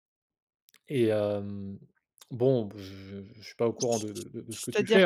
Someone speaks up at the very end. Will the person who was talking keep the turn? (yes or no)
no